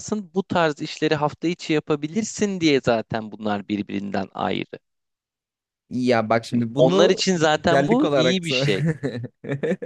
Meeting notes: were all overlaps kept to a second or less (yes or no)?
no